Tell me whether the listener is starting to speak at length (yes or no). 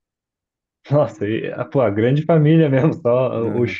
no